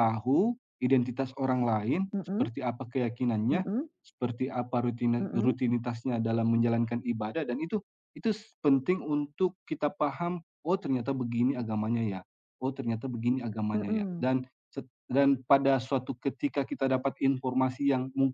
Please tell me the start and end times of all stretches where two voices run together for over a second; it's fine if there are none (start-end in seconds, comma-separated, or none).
none